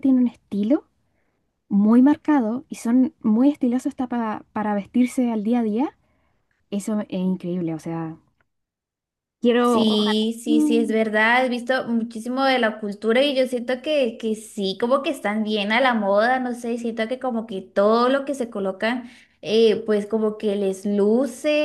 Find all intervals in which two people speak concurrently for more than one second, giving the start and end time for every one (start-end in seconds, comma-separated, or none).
9.6-10.9